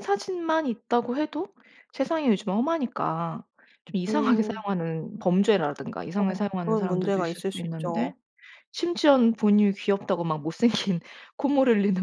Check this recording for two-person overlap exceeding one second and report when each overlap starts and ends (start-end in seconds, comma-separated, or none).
6.2-8.1